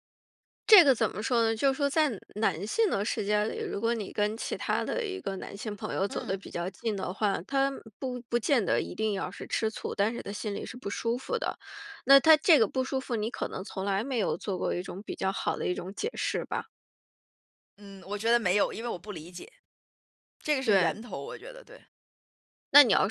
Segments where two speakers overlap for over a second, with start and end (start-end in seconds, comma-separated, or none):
none